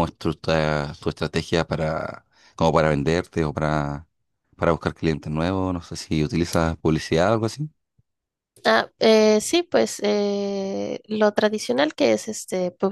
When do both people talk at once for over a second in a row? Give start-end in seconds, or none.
none